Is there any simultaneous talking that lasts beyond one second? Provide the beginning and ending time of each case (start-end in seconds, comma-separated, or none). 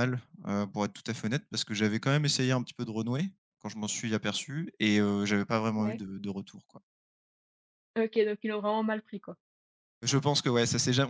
none